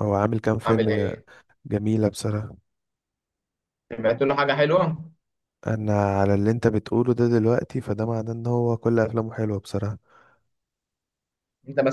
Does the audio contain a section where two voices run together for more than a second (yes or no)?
no